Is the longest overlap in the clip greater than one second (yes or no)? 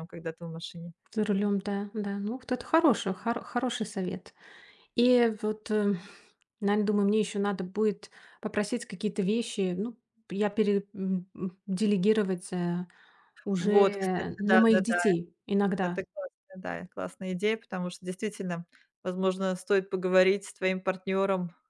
yes